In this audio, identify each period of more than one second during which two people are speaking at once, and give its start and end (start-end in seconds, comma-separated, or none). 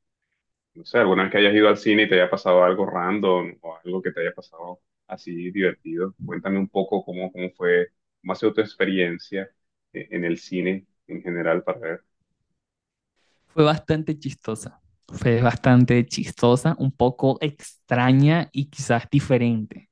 none